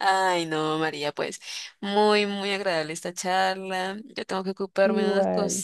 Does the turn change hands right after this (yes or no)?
no